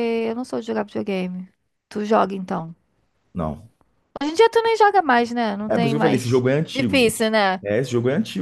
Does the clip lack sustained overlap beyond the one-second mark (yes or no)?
no